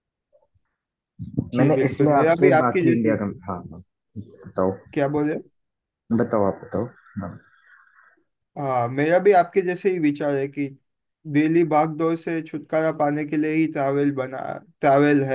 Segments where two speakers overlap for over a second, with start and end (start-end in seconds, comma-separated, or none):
1.6-3.1